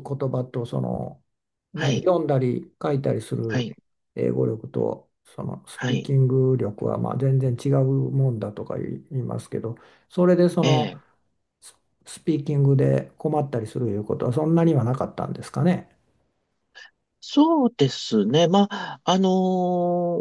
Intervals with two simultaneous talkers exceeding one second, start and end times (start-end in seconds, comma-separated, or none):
none